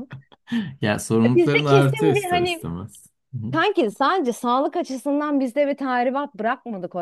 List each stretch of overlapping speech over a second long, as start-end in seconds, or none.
1.2-2.7